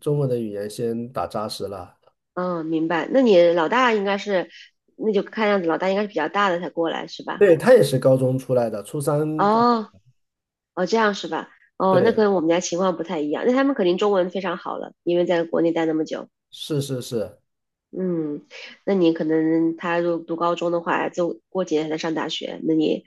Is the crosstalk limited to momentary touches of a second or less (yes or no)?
yes